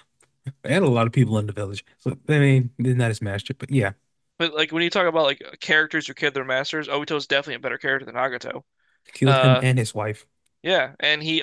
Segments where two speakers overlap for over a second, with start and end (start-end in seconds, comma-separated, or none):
none